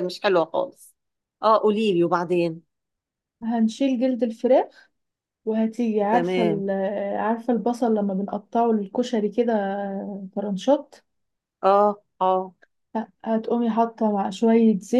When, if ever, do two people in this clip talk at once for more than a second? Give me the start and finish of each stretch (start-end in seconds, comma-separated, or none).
none